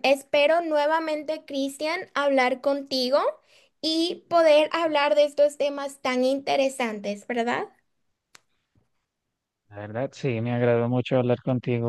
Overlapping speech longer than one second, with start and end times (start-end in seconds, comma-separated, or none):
none